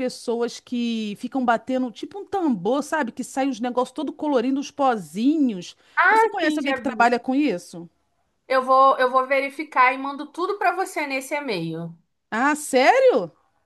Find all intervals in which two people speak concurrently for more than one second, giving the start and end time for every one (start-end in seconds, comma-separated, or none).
none